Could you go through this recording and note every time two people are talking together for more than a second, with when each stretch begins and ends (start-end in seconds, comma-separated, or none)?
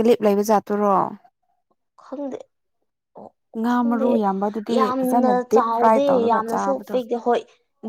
4.8-7.0